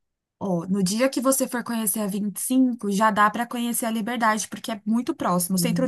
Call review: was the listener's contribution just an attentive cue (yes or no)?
yes